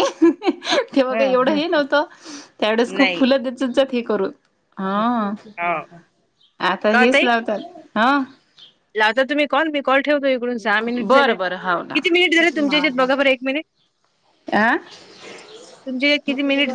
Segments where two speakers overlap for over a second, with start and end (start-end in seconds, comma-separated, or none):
11.1-13.1